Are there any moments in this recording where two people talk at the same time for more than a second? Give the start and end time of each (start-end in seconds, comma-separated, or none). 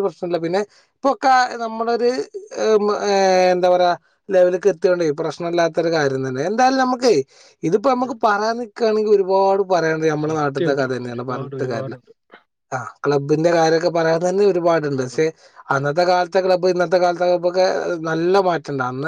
10.2-11.9